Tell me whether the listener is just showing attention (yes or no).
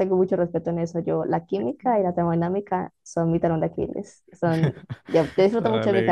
yes